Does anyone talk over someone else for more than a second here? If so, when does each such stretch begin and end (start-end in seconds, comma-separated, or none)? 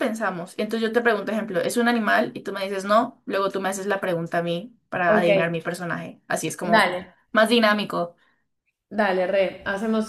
none